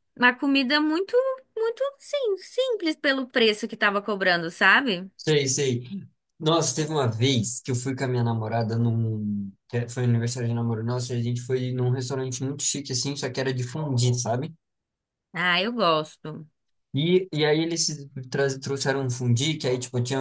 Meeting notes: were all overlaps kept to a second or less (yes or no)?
yes